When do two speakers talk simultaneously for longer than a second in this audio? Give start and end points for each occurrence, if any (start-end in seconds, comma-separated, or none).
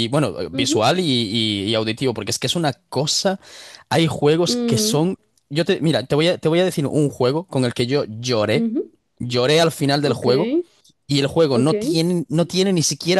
none